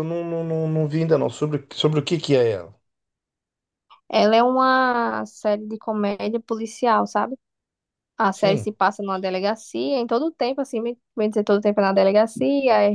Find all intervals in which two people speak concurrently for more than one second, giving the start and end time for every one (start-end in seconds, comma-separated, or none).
none